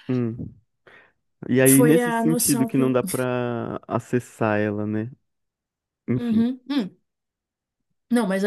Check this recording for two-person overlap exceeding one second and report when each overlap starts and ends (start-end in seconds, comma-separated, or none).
1.7-3.0